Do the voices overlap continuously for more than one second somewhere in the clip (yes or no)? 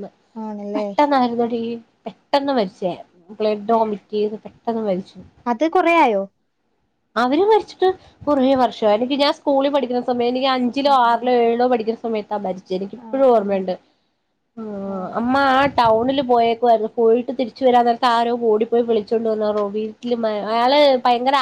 no